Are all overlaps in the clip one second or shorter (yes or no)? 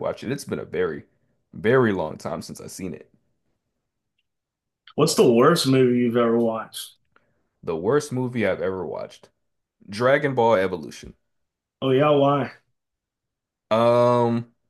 yes